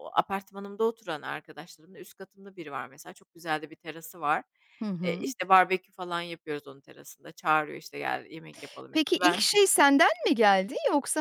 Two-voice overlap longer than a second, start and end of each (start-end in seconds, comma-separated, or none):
none